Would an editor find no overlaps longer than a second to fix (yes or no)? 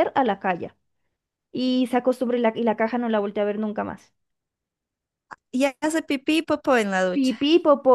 yes